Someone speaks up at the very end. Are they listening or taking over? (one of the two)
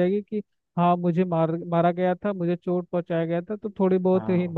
listening